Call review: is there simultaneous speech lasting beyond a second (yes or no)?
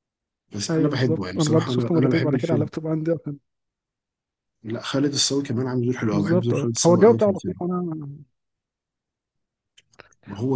yes